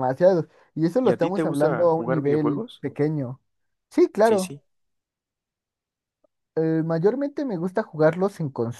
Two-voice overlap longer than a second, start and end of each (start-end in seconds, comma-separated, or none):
1.0-2.8